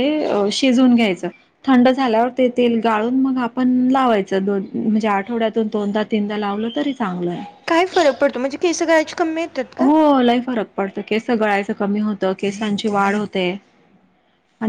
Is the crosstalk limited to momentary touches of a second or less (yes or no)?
yes